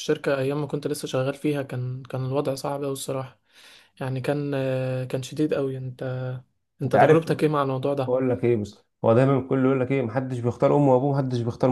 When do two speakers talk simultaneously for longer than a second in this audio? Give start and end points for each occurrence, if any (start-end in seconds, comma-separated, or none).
none